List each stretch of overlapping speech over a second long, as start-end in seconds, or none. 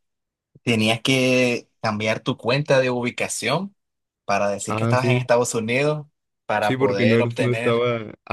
6.6-7.8